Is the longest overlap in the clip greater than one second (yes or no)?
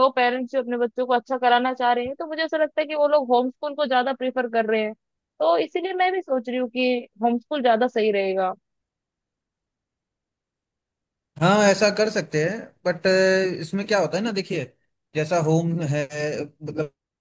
no